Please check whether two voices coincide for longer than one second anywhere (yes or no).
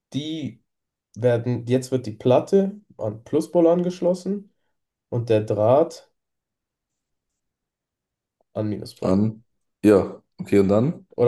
no